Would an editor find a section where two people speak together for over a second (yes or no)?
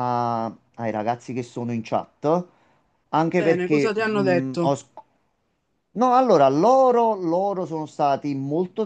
yes